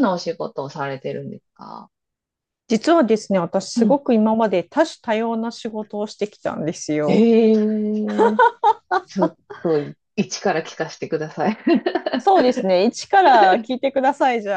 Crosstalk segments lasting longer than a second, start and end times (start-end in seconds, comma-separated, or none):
none